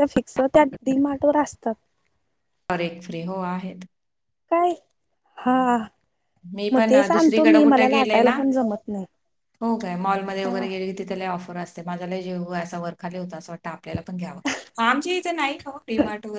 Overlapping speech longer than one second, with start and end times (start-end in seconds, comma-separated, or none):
6.7-8.3